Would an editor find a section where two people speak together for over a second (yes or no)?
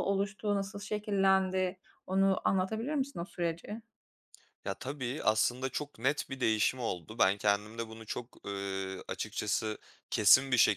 no